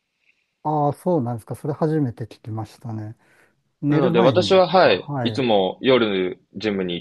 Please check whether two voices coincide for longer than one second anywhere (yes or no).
yes